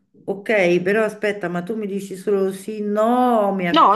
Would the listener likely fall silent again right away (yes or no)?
no